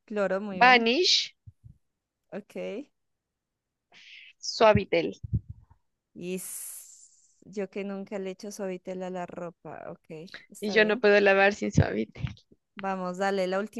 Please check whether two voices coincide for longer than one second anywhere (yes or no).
no